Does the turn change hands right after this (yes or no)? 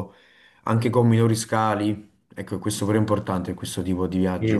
yes